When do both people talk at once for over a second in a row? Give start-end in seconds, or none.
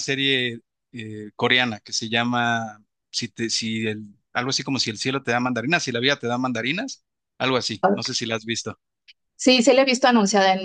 none